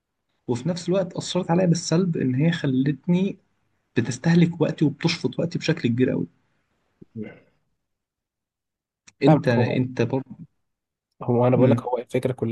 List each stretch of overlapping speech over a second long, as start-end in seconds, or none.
none